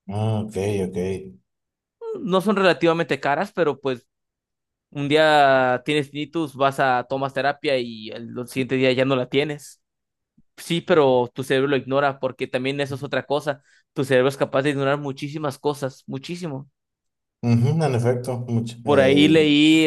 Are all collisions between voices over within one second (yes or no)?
yes